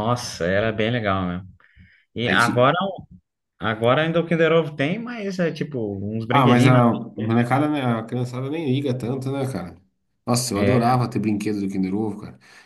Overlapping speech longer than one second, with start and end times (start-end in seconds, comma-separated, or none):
none